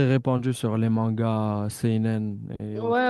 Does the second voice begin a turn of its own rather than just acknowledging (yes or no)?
yes